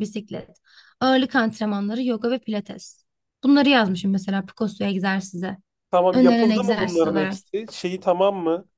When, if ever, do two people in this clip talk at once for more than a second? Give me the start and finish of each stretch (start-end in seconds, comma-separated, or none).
6.1-7.4